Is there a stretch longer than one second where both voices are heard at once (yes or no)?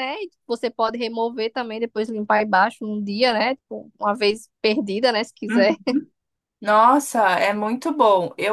no